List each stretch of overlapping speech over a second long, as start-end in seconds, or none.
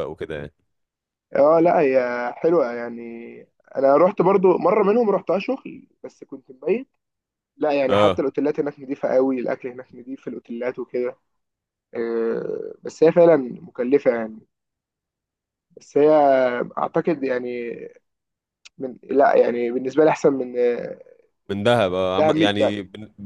none